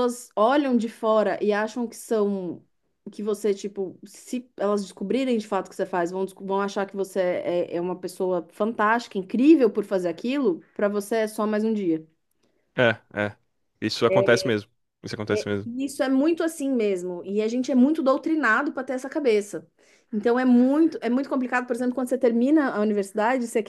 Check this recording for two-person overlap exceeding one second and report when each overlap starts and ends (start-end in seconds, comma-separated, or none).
none